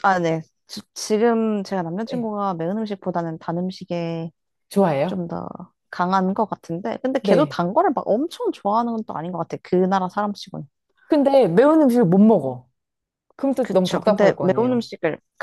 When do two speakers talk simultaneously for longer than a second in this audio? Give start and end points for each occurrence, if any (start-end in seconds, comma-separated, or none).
13.6-14.9